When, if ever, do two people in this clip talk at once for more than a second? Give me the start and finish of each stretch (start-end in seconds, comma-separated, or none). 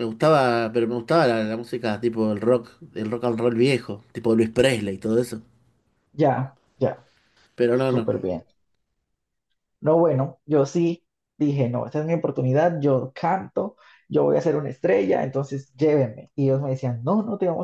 none